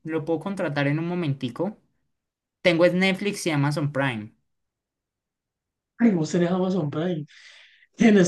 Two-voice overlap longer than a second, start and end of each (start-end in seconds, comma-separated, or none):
none